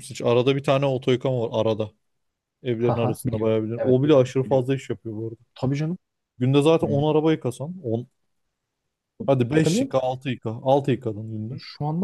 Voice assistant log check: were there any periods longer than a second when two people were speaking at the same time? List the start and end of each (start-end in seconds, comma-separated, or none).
2.8-4.7